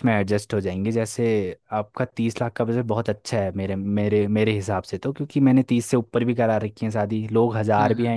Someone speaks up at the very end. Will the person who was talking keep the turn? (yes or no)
yes